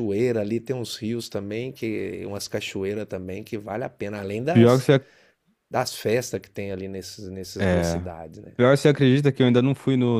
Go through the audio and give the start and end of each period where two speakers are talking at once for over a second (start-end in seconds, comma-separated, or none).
none